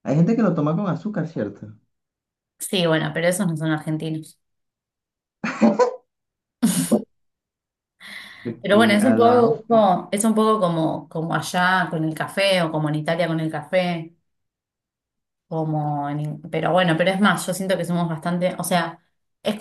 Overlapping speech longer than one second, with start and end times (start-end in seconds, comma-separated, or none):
8.6-9.9